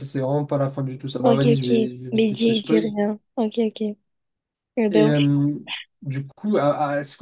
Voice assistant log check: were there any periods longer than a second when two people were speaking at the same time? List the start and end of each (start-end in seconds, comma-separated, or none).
1.2-2.9